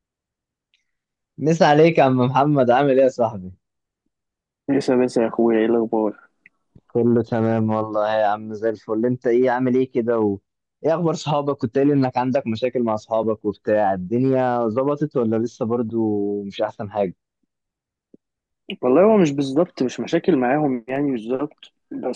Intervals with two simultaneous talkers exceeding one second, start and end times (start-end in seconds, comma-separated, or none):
none